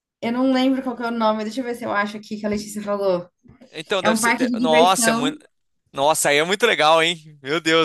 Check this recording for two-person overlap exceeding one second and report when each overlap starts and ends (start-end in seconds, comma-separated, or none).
4.0-5.4